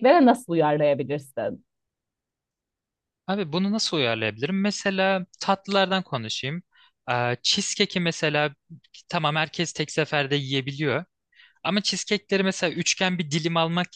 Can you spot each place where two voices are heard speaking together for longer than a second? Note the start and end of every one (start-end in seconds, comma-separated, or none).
none